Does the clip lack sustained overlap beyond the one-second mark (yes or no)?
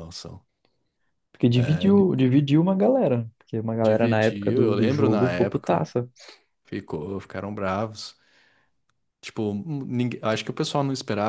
no